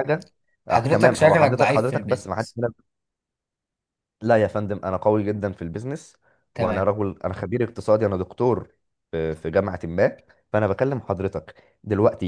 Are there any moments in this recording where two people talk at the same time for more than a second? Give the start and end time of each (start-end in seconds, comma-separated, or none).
0.7-2.5